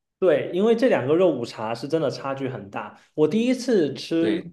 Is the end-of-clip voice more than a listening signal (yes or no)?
no